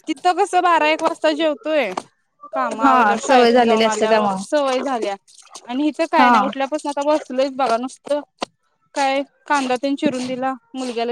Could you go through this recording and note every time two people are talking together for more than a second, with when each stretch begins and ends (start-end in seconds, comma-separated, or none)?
2.8-4.4